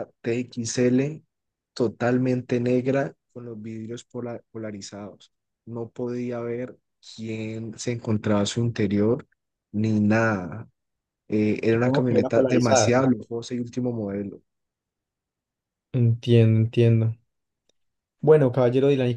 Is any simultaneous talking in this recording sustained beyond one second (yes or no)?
yes